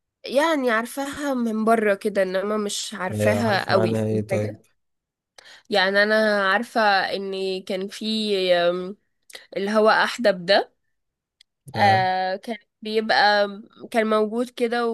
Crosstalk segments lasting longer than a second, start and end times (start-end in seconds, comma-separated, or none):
3.1-4.6